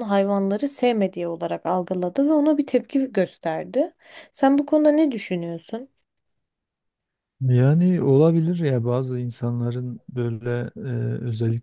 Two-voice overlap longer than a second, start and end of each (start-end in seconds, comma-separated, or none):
none